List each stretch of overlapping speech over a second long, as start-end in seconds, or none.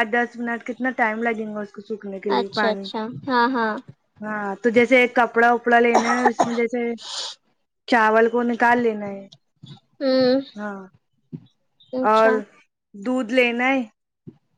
none